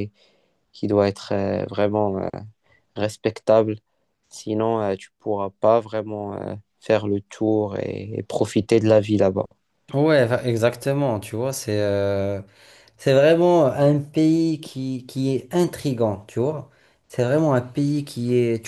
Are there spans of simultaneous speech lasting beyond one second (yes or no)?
no